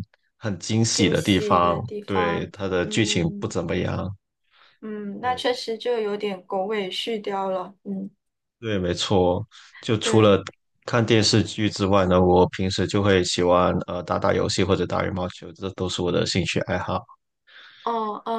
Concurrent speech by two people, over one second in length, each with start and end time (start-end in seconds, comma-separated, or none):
0.9-3.5